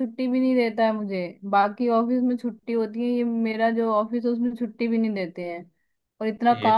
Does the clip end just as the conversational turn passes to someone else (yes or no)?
no